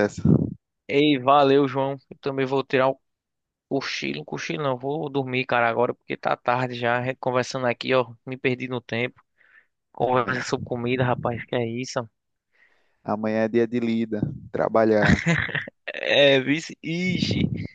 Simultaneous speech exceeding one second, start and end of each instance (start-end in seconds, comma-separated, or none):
none